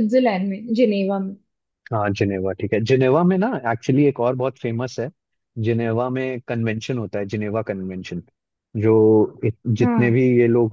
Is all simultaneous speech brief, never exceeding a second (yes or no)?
yes